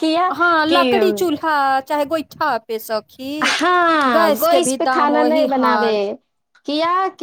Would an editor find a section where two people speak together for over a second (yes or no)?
yes